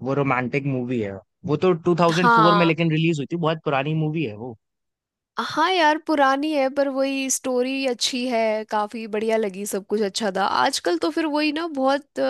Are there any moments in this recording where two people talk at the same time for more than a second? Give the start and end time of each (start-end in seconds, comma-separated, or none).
none